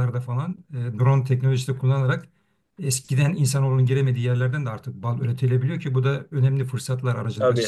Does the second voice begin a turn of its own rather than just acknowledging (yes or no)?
no